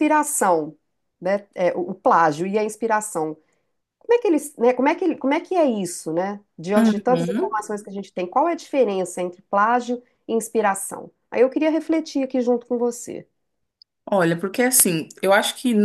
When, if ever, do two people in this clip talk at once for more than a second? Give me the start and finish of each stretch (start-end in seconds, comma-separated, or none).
none